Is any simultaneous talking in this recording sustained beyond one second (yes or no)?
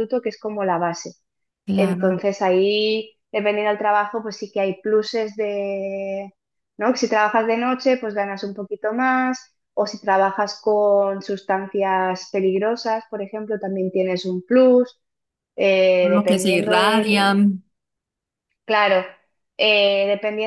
yes